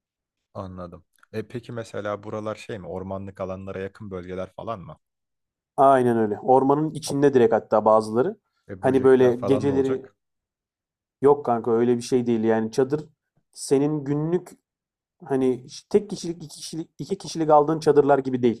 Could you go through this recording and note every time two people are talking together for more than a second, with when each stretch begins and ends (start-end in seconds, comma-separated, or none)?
8.8-10.1